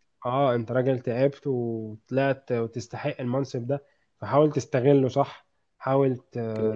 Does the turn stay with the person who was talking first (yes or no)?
yes